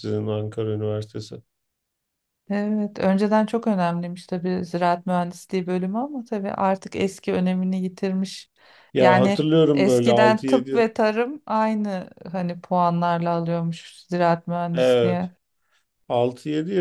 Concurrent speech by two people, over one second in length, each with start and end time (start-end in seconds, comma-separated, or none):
9.0-10.9